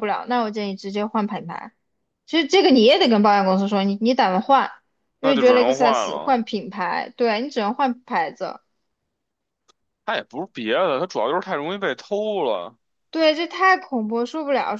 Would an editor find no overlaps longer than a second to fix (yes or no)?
no